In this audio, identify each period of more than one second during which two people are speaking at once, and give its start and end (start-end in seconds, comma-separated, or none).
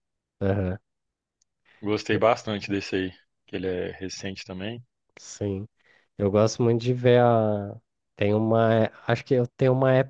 none